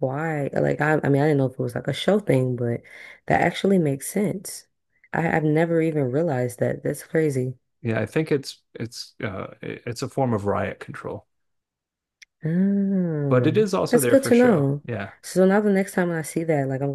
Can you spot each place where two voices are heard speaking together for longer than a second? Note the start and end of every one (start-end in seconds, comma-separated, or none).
13.3-14.8